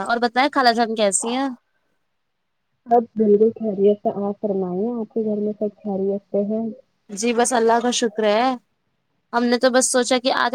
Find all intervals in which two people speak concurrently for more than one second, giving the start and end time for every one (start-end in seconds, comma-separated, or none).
none